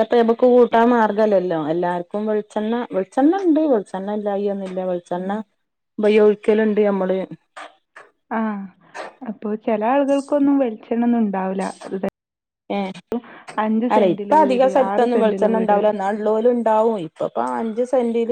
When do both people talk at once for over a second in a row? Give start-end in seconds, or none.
13.9-15.8